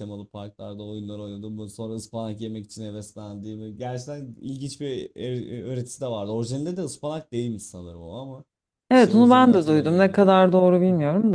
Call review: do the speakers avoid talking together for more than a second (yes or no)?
no